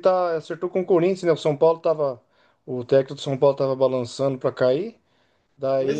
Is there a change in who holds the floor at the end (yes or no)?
no